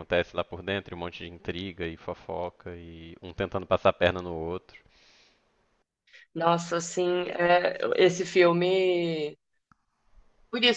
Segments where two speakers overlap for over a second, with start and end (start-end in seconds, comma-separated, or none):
none